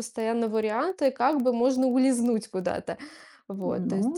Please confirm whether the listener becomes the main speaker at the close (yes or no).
yes